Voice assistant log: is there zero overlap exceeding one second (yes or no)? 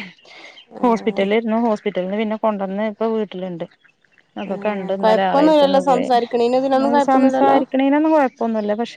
no